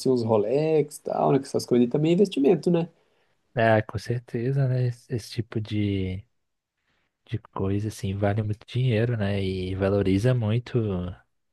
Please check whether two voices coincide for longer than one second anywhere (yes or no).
no